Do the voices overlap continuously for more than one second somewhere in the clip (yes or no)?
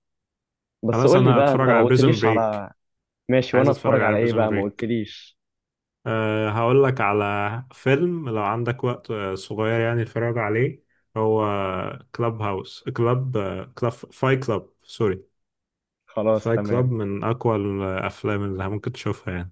yes